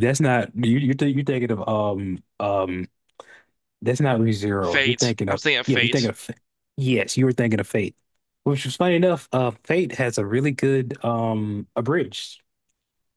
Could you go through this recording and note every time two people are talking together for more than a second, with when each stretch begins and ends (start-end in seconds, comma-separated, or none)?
4.6-6.1